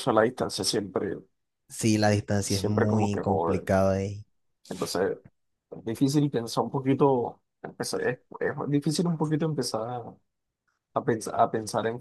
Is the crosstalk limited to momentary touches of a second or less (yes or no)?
no